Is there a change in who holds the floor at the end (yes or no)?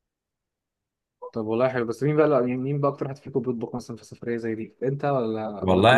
yes